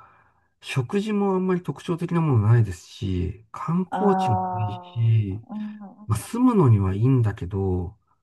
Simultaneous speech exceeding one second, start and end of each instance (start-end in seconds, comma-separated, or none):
3.9-5.5